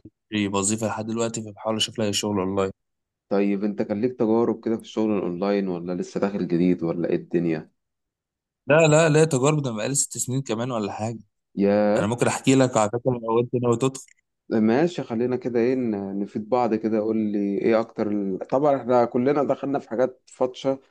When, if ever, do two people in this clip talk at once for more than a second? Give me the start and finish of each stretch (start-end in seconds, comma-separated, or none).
none